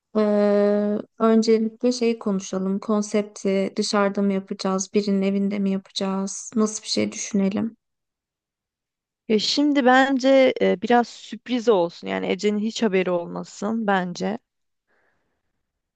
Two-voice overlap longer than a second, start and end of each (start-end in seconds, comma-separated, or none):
none